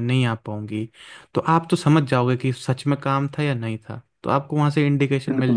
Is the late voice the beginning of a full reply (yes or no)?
yes